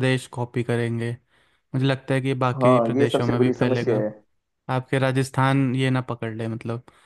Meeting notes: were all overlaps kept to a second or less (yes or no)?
no